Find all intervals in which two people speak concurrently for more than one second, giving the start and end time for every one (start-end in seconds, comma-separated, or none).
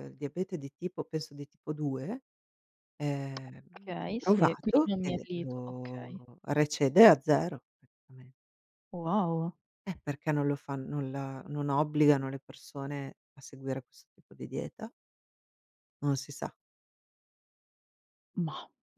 4.1-6.2